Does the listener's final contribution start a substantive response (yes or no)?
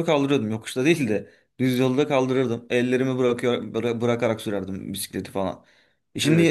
no